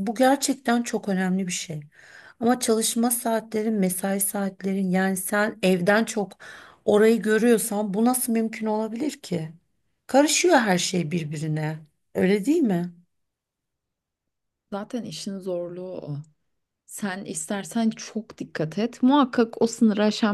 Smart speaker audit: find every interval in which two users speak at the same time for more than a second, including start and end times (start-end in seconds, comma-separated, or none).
none